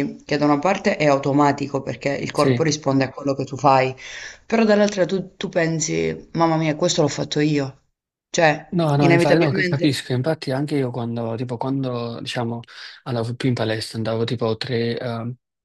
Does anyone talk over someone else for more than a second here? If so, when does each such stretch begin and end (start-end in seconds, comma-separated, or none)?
8.7-10.1